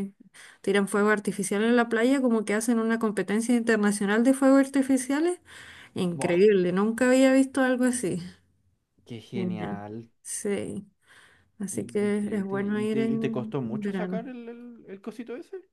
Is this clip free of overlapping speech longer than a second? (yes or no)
no